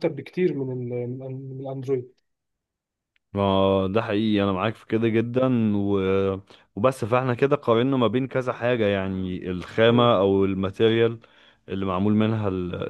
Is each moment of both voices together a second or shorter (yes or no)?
yes